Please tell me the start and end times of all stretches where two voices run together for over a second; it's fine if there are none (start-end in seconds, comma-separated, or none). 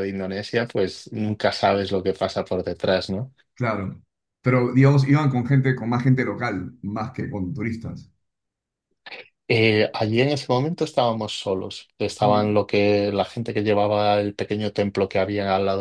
none